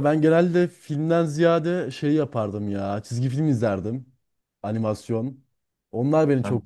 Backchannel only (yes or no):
yes